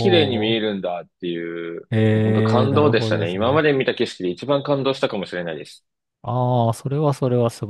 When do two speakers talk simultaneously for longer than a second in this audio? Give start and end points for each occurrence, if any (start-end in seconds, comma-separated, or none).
1.9-3.7